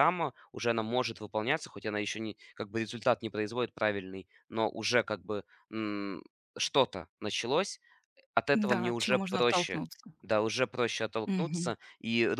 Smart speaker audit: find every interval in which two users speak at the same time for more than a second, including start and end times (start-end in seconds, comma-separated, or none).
8.5-9.8